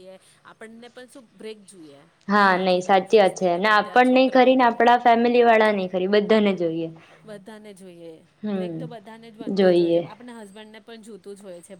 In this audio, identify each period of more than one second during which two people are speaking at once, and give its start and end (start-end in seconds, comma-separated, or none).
2.5-4.7